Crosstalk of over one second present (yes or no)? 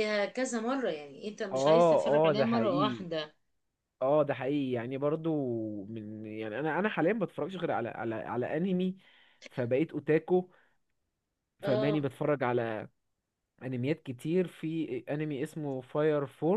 yes